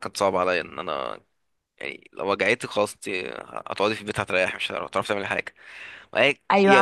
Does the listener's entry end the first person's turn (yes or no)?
yes